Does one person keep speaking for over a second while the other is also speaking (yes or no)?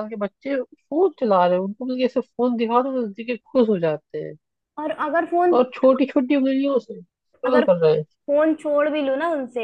no